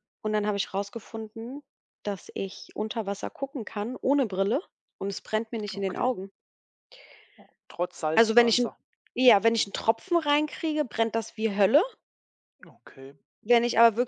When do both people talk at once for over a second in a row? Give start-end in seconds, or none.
none